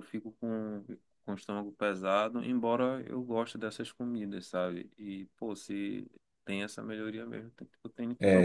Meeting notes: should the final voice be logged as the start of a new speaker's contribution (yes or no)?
yes